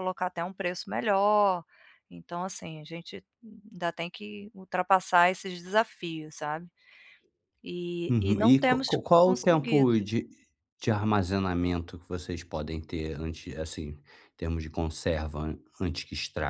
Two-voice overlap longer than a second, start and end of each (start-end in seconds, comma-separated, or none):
8.1-10.0